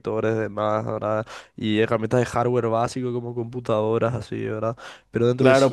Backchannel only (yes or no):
no